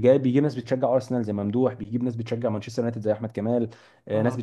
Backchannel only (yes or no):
yes